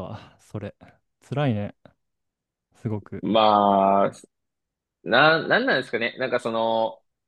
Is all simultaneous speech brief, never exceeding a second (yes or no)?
yes